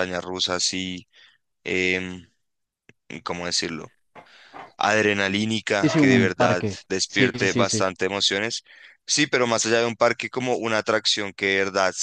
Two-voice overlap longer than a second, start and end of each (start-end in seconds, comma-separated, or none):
5.8-7.8